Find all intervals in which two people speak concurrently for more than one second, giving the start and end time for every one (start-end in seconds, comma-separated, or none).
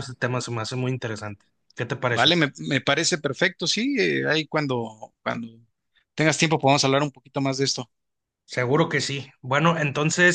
none